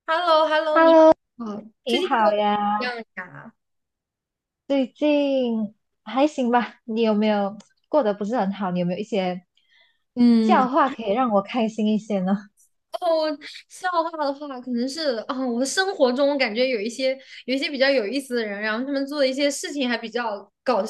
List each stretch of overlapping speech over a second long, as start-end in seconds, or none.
none